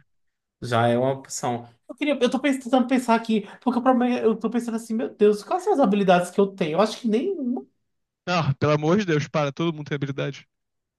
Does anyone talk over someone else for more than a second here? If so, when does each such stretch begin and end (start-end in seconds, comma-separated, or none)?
none